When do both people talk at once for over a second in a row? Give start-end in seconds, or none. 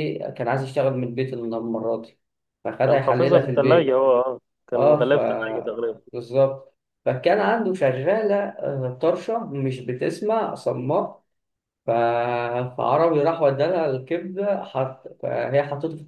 2.8-4.0